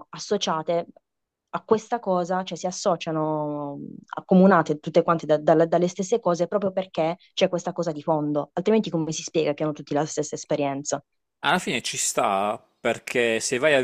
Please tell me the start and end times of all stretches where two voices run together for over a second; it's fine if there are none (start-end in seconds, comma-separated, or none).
none